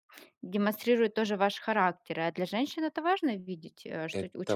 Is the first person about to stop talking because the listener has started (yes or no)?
yes